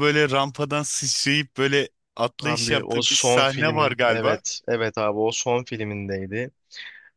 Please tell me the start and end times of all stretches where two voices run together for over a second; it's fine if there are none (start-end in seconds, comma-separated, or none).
2.5-4.4